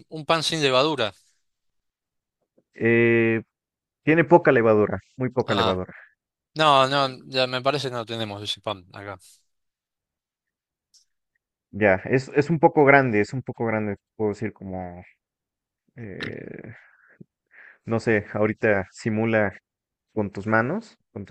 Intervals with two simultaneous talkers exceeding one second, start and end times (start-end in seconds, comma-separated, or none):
none